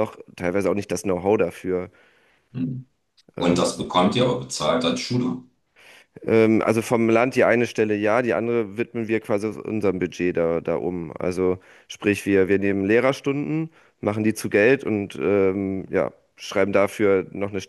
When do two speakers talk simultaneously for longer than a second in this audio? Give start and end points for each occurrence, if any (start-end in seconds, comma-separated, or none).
none